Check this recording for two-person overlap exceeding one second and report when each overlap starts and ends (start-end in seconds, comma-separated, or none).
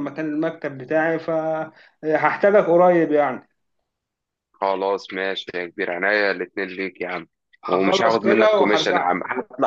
7.7-9.2